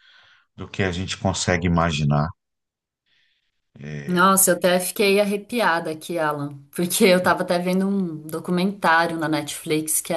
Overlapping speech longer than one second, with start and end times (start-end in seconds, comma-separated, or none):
none